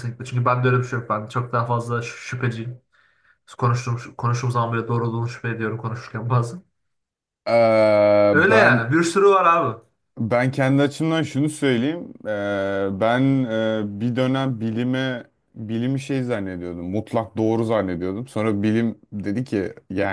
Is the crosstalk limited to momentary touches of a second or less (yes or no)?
yes